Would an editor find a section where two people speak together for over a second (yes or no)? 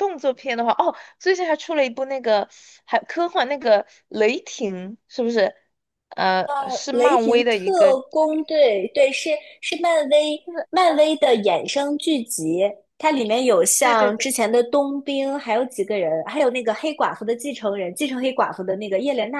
yes